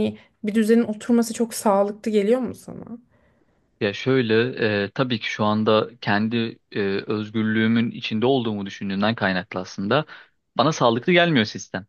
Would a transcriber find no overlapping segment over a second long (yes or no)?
yes